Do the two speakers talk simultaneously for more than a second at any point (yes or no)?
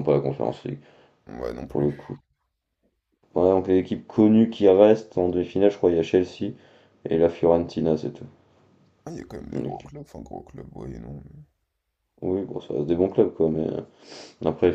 no